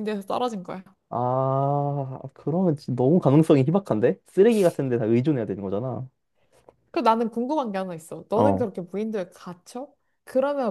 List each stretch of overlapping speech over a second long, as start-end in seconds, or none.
none